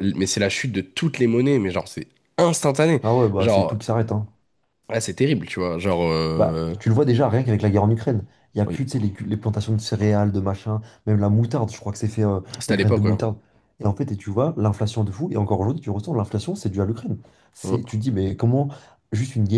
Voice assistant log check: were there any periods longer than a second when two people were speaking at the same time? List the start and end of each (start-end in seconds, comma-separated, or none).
none